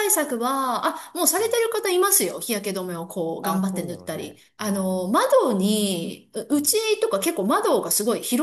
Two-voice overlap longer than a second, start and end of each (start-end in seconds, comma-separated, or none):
3.4-5.1